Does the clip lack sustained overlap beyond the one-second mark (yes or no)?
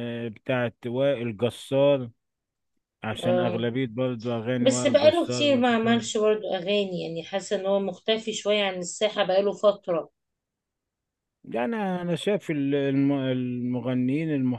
no